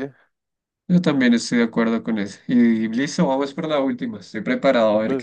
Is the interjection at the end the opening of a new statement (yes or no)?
yes